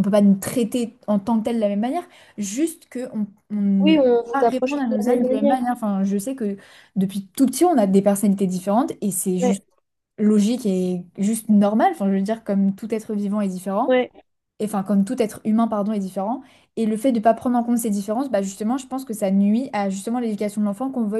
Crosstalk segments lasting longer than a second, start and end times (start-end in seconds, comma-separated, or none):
3.8-5.6